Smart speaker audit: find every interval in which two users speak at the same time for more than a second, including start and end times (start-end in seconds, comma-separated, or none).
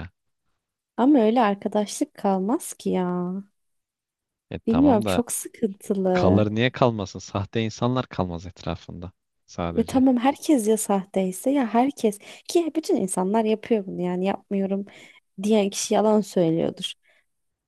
none